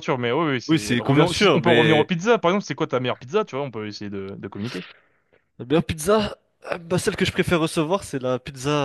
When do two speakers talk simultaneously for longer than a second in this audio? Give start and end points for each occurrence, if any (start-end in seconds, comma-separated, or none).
0.7-2.1